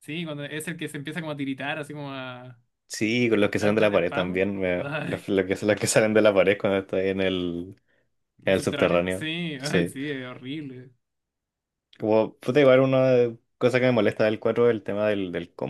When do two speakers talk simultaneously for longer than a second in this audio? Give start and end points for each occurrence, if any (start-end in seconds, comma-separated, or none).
3.6-5.3, 8.4-9.9